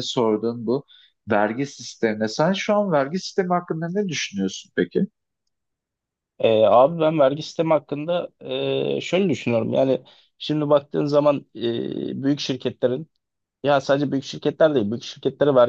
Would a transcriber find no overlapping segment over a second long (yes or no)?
yes